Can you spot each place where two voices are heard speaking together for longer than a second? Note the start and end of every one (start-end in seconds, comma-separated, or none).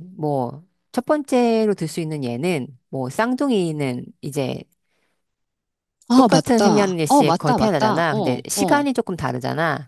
6.1-8.8